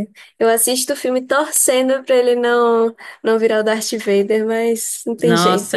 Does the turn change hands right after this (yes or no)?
yes